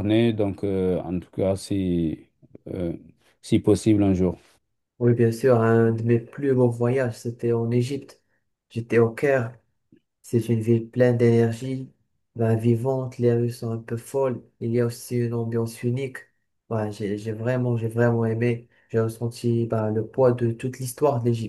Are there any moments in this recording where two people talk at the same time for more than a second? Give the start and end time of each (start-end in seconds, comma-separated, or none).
none